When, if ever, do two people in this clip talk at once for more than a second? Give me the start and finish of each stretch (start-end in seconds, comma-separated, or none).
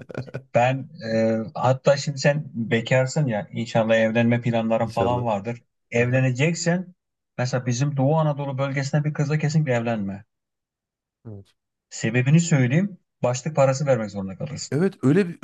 none